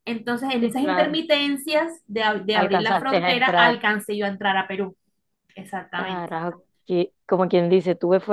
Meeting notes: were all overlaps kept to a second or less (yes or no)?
no